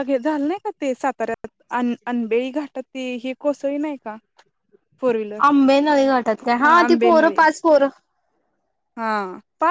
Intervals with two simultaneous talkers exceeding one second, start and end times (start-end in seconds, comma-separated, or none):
none